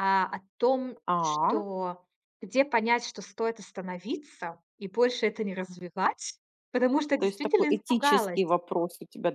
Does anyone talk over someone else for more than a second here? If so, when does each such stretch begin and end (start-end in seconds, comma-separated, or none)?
7.2-8.4